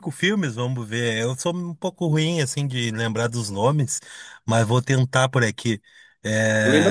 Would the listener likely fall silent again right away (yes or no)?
no